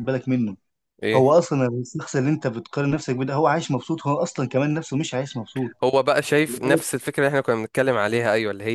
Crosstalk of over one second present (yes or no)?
no